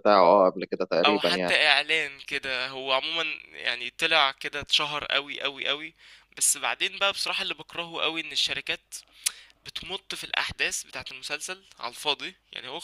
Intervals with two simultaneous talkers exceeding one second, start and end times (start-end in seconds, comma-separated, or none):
none